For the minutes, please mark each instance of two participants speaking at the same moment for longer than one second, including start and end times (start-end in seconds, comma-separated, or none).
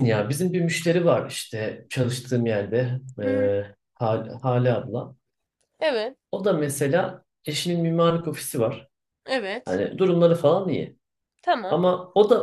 none